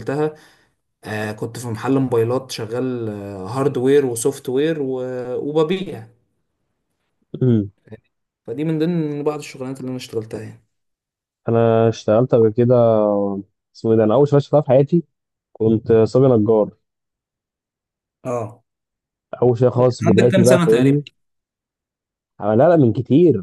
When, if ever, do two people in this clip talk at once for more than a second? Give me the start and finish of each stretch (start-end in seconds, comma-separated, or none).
19.8-21.0